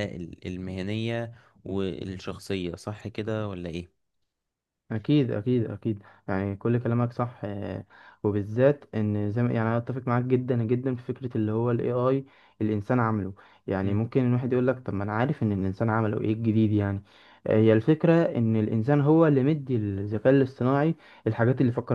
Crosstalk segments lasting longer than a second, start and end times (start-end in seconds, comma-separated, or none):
none